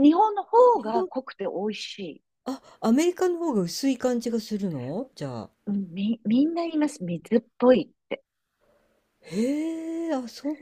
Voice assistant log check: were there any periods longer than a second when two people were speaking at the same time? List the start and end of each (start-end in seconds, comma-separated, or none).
none